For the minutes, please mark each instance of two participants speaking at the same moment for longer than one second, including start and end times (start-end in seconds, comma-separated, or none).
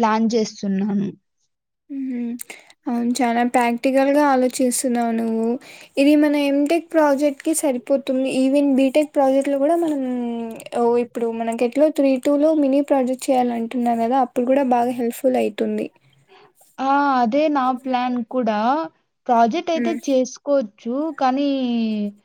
none